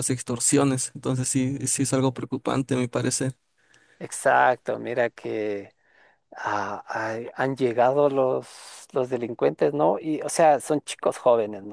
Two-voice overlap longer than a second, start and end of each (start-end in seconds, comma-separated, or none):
none